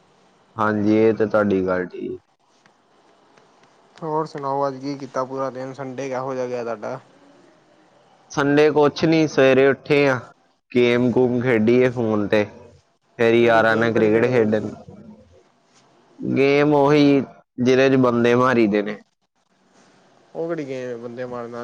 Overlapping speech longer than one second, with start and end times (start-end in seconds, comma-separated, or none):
13.4-14.7